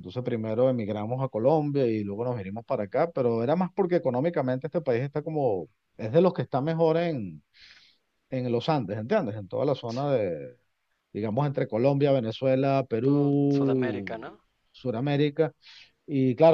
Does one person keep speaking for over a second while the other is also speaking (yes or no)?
yes